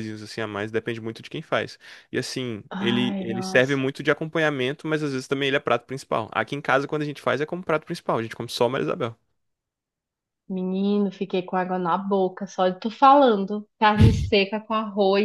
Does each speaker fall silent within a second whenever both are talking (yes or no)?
no